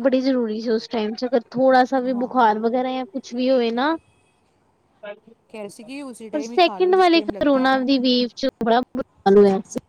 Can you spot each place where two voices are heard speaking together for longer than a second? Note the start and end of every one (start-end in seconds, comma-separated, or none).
5.5-7.8